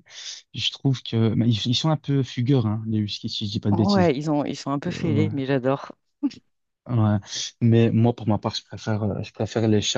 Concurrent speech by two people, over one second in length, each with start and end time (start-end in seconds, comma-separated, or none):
none